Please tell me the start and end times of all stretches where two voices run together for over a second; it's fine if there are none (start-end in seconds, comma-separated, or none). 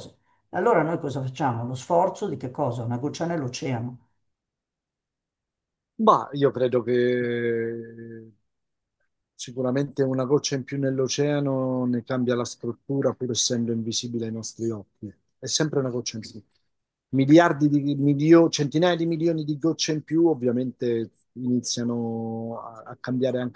none